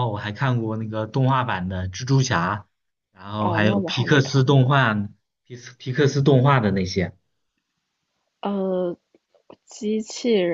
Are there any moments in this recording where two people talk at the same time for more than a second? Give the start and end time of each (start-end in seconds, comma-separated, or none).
3.4-4.8